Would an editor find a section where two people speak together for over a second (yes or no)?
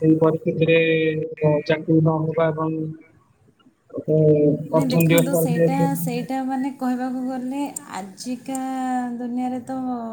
yes